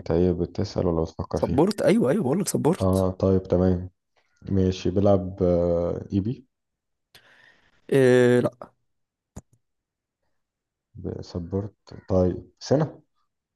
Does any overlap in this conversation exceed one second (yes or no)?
no